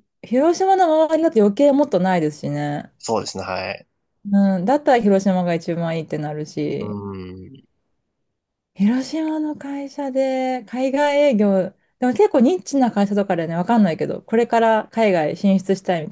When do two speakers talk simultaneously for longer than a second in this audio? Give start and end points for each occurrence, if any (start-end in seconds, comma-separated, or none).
none